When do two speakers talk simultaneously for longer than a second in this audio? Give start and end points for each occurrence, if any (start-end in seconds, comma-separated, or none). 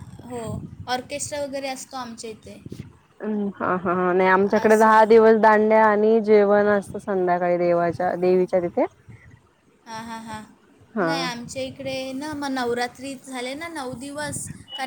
none